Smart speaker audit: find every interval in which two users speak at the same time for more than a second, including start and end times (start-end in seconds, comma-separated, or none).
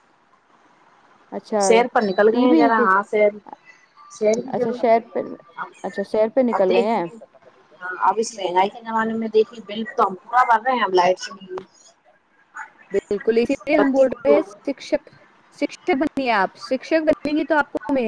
none